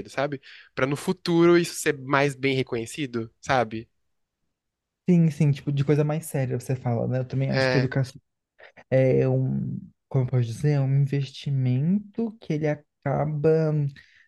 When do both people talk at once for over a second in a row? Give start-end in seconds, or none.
none